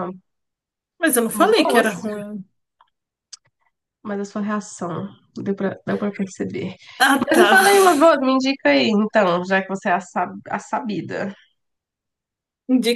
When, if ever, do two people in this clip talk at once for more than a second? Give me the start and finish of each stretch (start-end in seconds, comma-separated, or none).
none